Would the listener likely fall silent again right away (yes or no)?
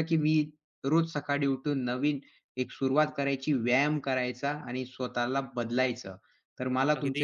yes